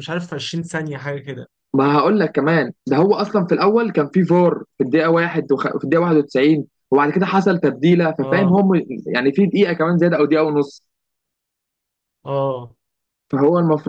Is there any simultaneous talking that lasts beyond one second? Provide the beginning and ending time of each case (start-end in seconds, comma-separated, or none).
none